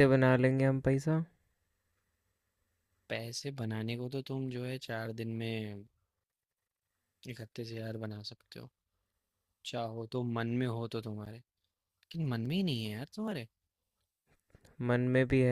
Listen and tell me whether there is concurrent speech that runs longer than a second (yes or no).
no